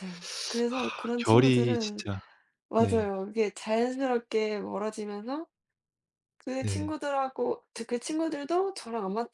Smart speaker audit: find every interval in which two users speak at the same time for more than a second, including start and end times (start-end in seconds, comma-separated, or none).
0.7-2.0